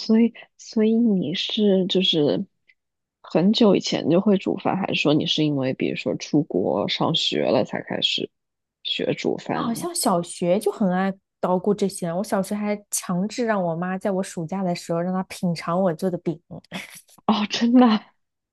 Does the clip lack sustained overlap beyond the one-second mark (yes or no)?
yes